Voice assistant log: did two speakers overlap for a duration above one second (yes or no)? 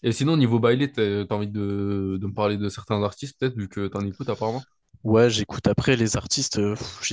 no